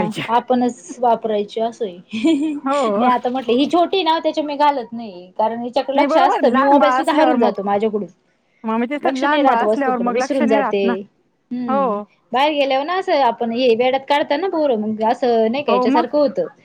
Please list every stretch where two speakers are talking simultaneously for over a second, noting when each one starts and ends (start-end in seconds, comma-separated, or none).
5.9-7.5, 9.0-10.9